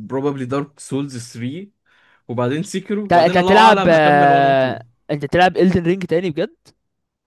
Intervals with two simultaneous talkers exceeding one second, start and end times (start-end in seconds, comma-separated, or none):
3.0-4.8